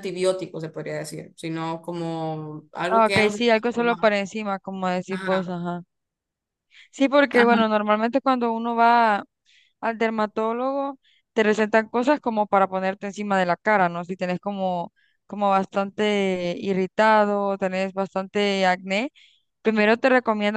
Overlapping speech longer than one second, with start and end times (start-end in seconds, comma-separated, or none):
2.9-4.1